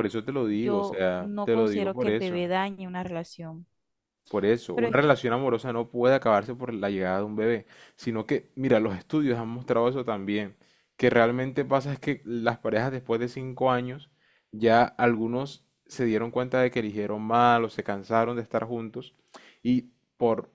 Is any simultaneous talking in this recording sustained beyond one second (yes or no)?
yes